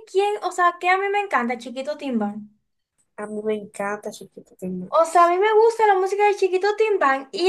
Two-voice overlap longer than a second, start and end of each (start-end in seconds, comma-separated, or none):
none